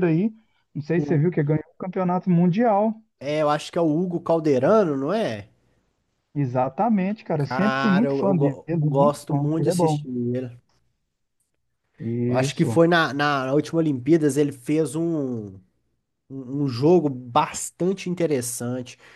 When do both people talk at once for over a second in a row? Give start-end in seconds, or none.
7.4-10.0